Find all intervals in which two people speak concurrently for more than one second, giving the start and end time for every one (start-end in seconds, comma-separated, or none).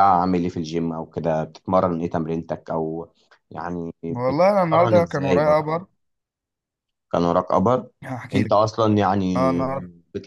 4.3-5.8